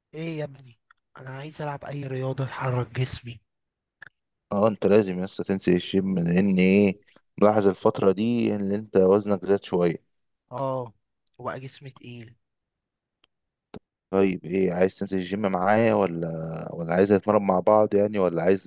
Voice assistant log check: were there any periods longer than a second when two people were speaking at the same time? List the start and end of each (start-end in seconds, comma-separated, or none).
none